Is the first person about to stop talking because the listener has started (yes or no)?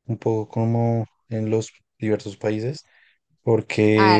yes